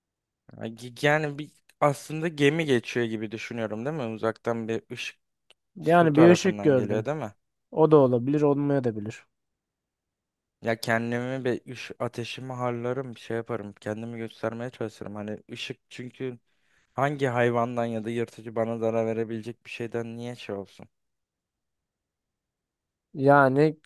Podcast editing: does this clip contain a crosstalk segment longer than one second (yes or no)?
yes